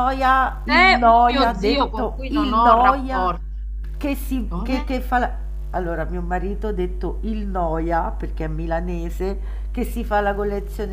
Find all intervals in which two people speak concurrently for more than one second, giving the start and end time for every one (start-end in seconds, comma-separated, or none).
0.6-3.4